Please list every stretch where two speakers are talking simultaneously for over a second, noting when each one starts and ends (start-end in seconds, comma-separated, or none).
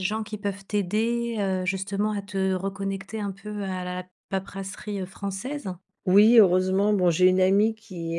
none